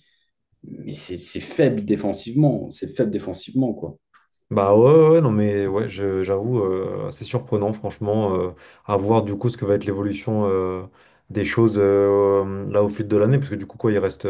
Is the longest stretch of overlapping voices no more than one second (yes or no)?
yes